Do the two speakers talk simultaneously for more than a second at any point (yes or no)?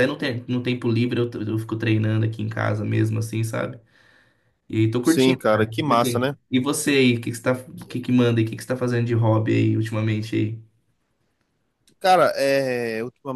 yes